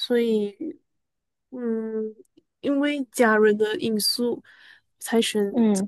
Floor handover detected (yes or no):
no